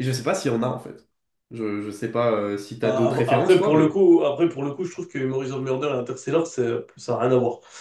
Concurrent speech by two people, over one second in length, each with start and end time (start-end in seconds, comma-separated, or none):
2.8-4.0